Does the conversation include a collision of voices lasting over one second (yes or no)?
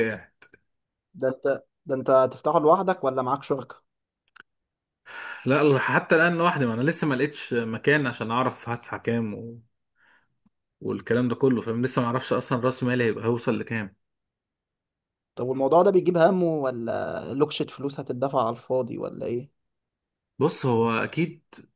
no